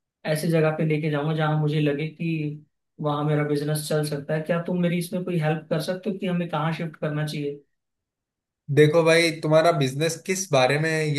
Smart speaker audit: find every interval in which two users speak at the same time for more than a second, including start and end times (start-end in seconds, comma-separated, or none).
none